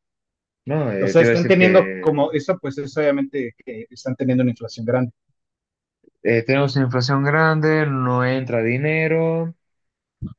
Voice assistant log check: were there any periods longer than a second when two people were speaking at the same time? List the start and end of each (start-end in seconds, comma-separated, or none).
1.0-2.3